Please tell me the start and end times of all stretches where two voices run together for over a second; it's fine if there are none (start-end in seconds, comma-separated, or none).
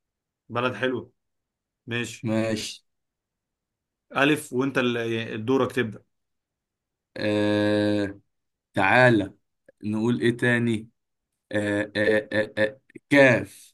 none